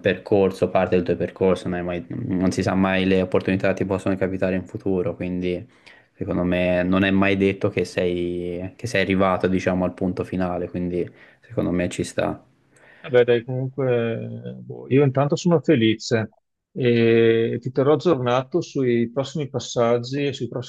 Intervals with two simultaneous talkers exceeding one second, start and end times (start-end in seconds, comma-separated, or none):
none